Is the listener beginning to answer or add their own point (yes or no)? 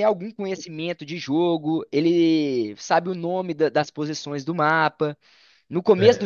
no